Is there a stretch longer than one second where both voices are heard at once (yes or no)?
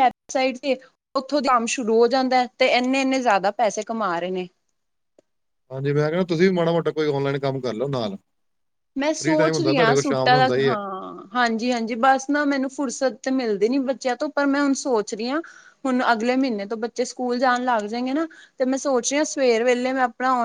yes